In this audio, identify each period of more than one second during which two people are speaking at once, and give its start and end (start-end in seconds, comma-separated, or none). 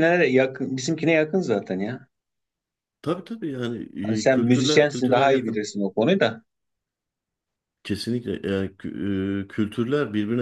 4.2-5.7